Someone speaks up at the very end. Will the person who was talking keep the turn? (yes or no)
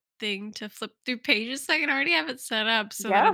yes